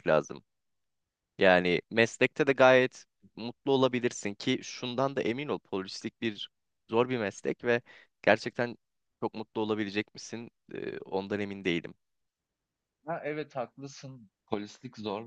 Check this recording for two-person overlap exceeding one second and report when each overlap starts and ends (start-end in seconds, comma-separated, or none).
none